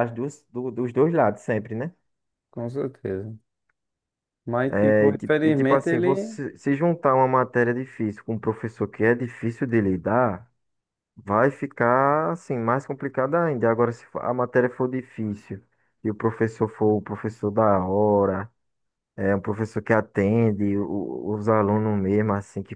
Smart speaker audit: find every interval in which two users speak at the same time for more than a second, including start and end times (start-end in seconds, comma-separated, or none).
4.7-6.4